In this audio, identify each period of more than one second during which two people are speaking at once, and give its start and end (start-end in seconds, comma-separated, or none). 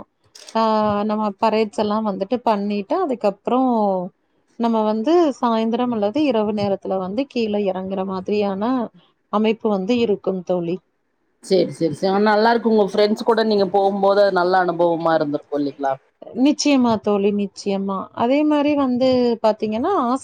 none